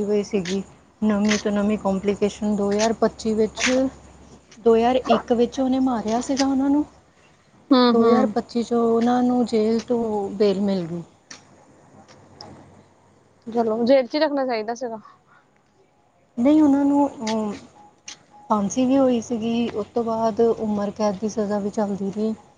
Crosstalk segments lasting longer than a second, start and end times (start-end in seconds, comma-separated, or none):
none